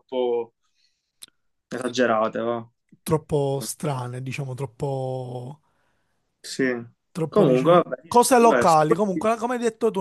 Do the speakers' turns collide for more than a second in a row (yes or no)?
yes